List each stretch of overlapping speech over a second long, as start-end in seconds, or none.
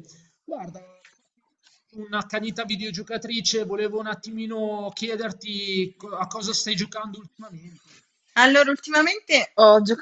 none